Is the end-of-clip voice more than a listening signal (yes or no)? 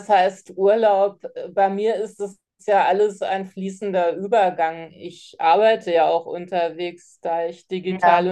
no